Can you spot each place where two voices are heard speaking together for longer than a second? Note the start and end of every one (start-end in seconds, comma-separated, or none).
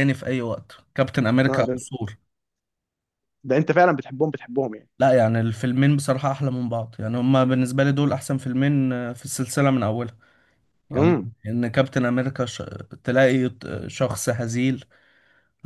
none